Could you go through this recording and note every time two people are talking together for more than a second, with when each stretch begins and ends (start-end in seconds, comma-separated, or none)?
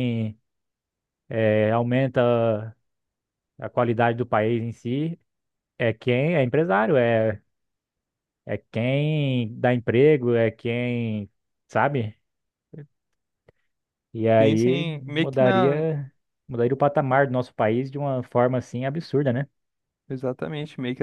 14.4-15.8